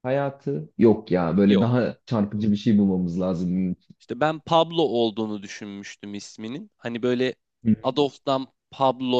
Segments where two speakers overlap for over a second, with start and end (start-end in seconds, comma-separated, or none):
none